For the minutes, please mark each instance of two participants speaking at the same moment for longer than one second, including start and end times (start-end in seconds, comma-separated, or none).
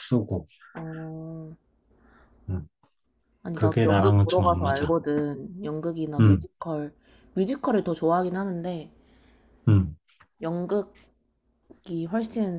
3.5-4.9